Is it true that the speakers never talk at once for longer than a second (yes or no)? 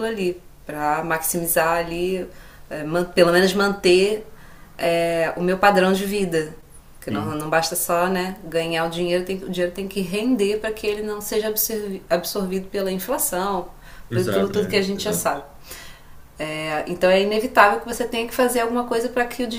no